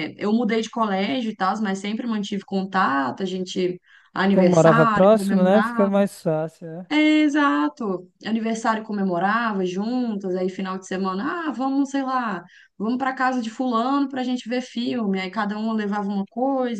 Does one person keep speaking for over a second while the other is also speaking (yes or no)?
yes